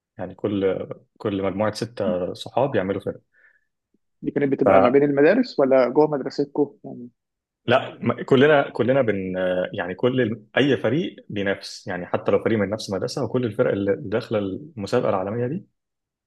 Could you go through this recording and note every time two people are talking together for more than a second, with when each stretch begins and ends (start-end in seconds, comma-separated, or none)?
none